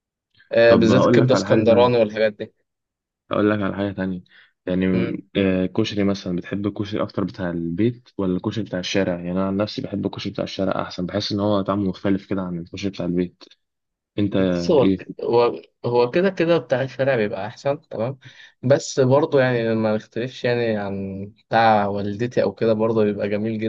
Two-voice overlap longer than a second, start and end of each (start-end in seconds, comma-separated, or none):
0.7-2.1